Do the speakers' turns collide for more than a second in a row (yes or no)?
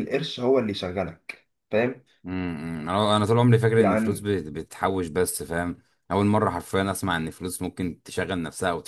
no